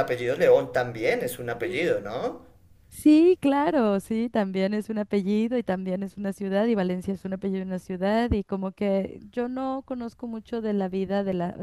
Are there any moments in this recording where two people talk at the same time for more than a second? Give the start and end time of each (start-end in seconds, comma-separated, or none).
none